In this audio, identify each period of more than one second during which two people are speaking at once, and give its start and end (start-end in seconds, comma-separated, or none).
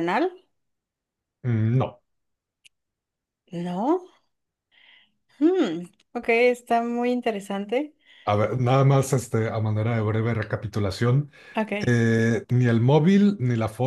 none